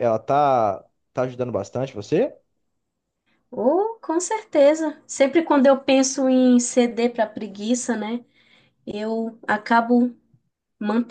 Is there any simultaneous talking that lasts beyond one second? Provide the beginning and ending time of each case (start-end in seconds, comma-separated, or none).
none